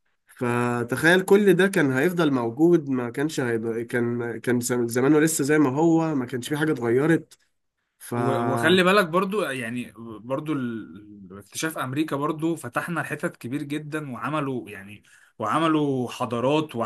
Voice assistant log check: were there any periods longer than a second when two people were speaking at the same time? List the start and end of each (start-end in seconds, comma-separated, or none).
none